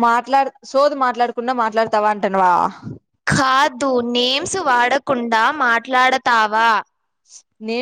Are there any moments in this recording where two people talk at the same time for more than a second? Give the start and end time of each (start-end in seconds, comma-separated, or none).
none